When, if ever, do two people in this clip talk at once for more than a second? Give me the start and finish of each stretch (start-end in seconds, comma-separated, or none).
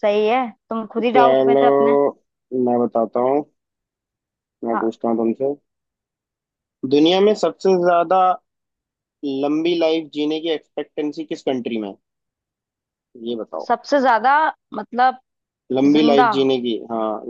none